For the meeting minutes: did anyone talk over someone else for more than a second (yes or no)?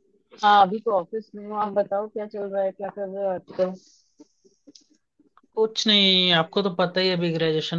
no